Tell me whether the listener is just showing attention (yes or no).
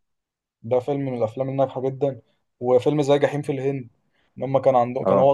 no